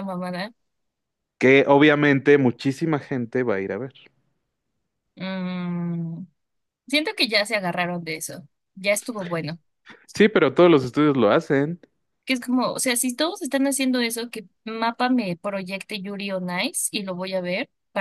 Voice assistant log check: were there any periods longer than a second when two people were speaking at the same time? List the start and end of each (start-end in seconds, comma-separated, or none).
none